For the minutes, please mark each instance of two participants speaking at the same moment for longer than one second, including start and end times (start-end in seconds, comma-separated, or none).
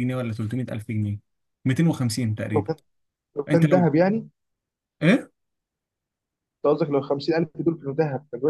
none